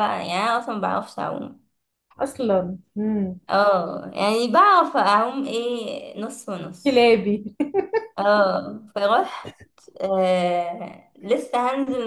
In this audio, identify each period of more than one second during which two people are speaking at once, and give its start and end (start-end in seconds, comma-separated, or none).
none